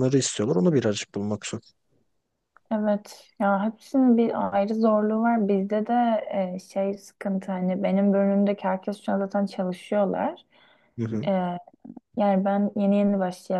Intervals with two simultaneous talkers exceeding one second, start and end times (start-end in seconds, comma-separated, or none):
none